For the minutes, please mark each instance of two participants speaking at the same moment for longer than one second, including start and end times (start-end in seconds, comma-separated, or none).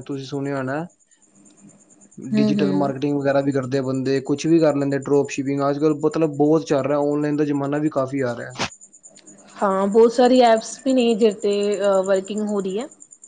none